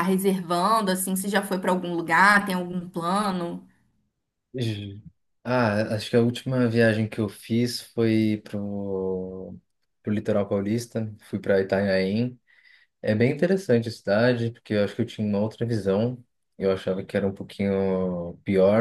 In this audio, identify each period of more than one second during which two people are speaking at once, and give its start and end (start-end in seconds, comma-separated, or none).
none